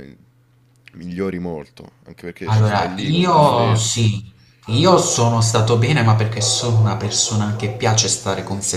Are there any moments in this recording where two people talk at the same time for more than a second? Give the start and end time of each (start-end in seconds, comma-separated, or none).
2.5-4.1